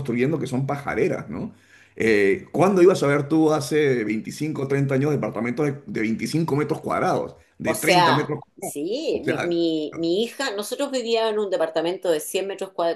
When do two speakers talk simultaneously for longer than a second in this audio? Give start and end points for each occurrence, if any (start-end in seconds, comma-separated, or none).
7.7-9.6